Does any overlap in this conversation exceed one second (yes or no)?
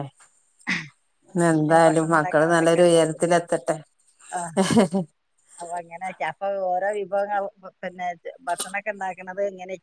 yes